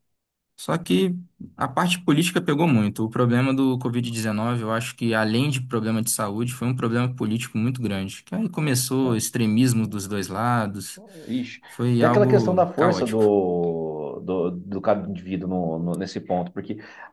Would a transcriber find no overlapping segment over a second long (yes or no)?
no